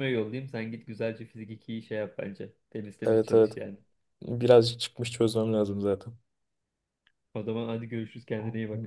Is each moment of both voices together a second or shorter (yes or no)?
yes